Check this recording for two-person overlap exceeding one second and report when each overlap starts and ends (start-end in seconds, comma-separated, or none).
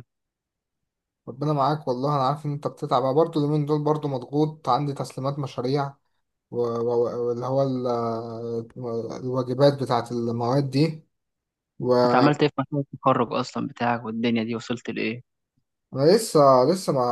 none